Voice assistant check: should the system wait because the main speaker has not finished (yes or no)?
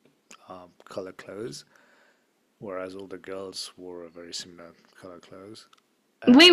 no